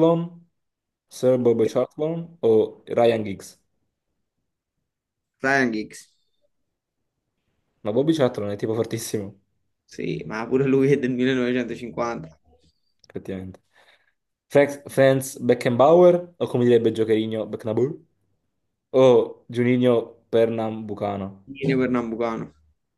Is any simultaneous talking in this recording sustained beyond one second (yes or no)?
no